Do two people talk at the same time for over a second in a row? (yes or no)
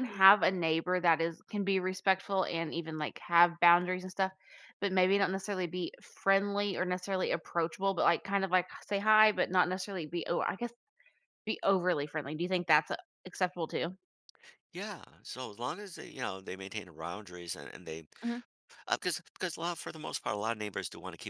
no